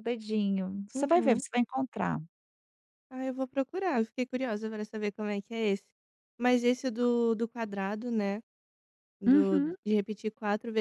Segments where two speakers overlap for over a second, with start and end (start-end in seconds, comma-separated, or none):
none